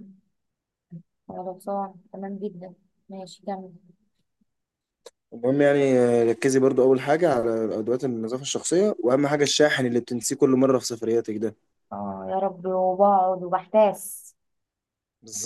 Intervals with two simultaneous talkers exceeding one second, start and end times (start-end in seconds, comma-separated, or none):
none